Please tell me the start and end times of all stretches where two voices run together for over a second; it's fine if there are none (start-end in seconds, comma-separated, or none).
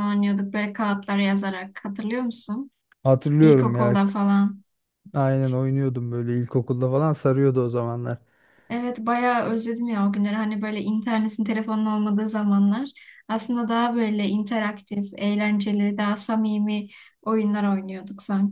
none